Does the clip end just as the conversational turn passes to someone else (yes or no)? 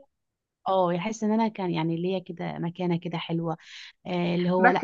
yes